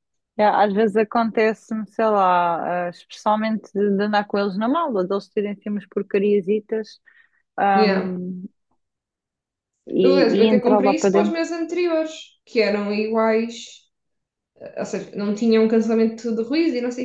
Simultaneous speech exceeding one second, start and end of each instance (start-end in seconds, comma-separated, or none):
10.0-11.4